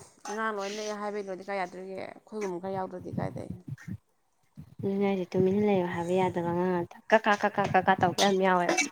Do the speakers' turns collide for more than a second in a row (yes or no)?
no